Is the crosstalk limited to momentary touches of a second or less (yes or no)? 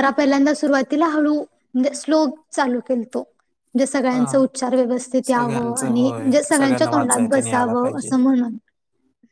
no